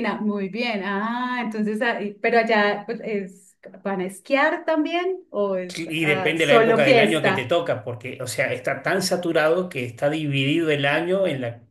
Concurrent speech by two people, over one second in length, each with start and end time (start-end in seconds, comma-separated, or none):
5.8-7.5